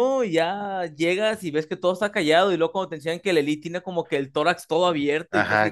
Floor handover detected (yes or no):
yes